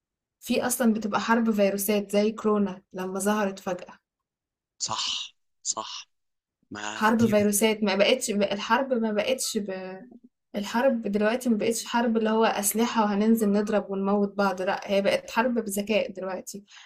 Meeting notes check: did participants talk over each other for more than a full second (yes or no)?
no